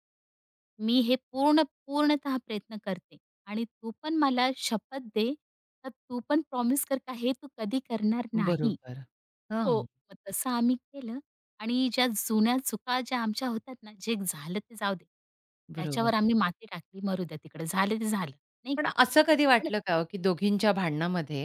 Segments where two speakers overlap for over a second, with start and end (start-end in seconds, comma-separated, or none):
none